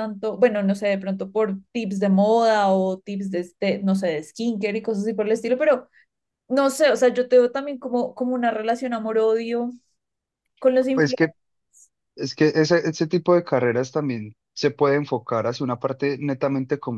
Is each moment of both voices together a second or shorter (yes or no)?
yes